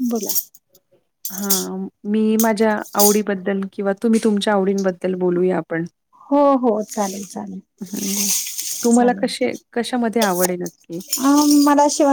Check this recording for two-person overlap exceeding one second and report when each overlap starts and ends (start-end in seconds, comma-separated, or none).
none